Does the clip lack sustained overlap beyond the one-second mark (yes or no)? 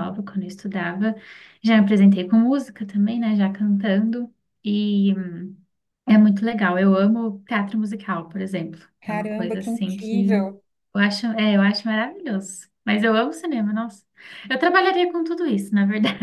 no